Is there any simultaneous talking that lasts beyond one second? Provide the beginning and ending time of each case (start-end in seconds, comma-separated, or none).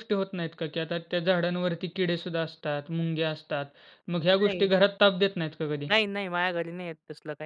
none